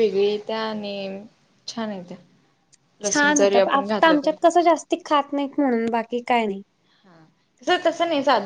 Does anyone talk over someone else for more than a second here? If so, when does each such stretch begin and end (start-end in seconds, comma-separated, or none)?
3.1-4.4